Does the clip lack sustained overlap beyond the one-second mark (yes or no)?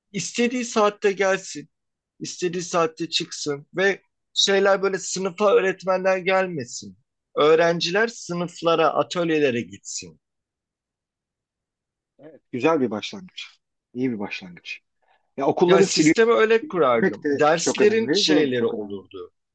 no